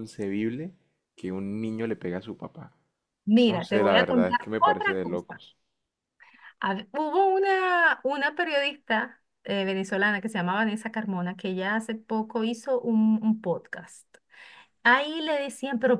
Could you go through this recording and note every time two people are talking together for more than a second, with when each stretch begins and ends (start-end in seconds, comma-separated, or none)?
3.5-5.4